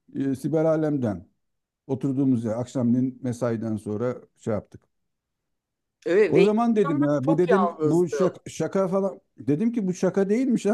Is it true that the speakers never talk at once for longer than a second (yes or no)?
no